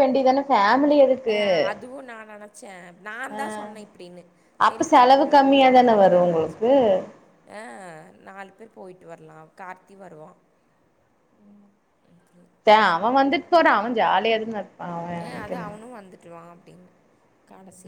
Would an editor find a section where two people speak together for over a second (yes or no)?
yes